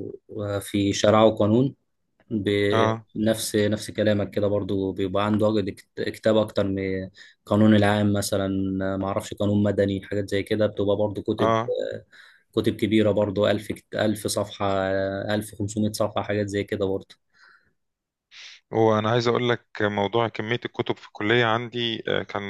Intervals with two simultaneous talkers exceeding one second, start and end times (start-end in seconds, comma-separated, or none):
none